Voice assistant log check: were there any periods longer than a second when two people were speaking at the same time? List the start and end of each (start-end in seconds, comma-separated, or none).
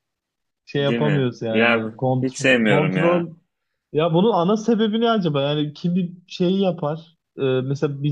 0.8-3.3